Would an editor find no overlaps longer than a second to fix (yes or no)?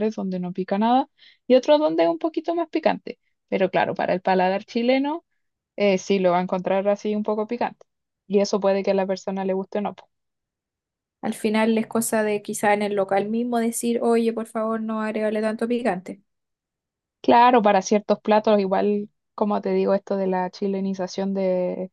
yes